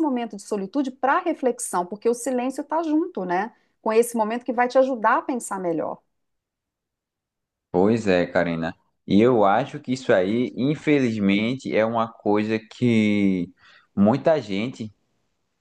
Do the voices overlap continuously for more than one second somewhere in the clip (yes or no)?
no